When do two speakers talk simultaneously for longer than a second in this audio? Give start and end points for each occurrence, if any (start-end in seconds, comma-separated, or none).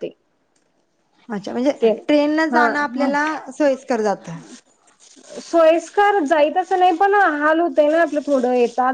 none